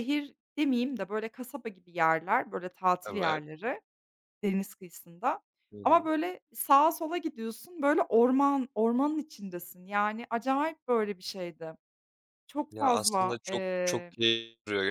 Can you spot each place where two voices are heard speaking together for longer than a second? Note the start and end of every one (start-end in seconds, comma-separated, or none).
12.7-14.1